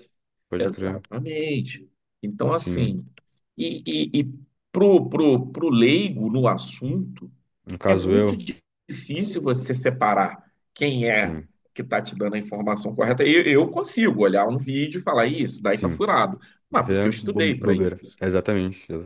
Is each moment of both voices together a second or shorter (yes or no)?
no